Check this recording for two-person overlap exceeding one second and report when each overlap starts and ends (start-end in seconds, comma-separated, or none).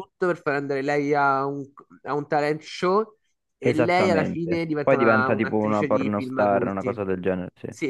3.6-7.0